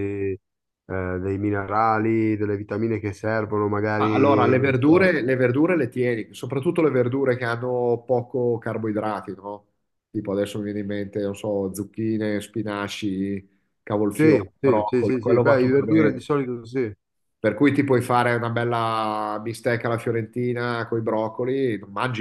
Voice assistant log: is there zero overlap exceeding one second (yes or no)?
no